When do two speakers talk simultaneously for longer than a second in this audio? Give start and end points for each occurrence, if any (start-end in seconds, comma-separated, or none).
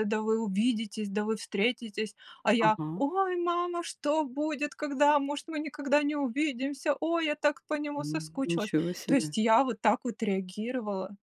7.9-9.4